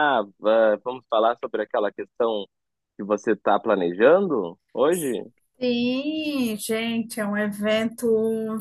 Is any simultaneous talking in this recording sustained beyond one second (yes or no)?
no